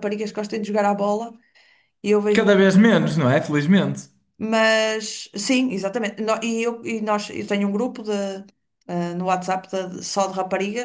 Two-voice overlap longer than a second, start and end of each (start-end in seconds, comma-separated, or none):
none